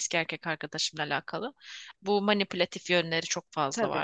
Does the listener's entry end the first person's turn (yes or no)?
no